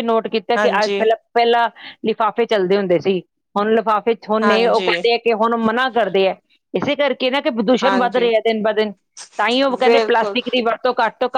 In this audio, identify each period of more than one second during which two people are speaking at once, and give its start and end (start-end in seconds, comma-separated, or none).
none